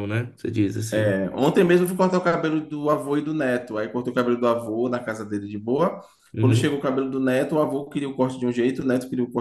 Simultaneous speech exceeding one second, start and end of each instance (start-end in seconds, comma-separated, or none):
none